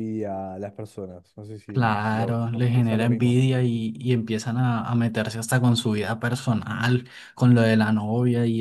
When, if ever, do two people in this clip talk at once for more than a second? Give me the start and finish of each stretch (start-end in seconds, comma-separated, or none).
1.7-3.4